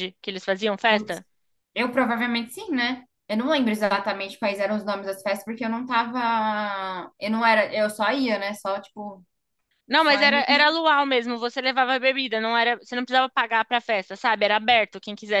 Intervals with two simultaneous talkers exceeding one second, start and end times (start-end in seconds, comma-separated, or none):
none